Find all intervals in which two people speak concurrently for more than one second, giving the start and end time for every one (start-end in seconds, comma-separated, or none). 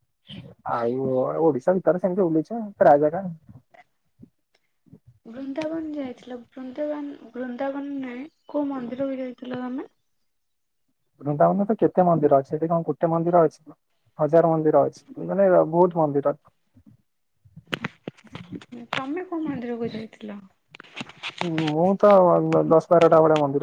none